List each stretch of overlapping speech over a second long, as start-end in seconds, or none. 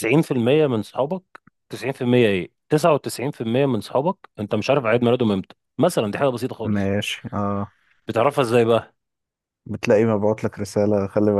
none